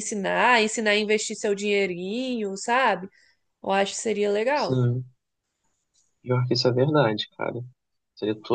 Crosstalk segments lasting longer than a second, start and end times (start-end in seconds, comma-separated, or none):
none